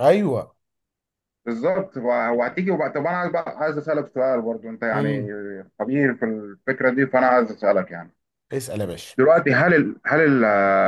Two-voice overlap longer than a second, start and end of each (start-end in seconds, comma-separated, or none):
none